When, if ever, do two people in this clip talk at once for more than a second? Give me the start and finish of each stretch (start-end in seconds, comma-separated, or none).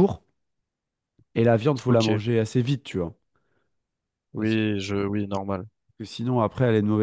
none